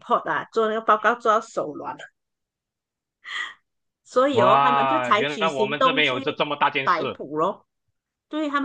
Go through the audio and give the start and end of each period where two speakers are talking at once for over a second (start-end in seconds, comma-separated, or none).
4.3-6.2